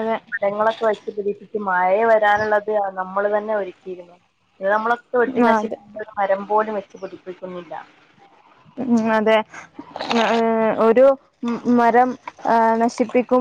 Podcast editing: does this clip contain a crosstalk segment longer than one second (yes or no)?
no